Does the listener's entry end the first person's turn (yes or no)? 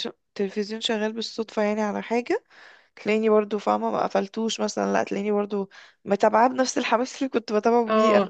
yes